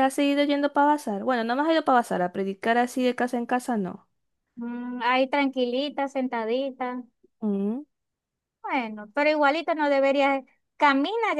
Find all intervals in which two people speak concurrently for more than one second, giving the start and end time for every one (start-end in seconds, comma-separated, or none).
none